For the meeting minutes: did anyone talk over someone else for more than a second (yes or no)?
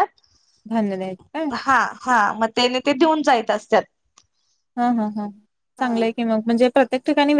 no